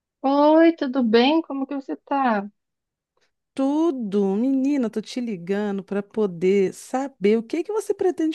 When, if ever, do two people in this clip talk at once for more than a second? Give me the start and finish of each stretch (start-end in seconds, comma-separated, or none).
none